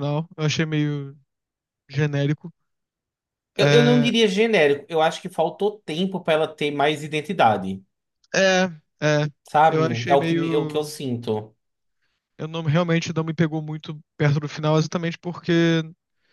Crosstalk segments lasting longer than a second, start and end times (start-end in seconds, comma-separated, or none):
9.7-10.9